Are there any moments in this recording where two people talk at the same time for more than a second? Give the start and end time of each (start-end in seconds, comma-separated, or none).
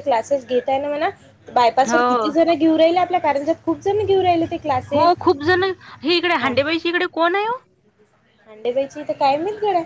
none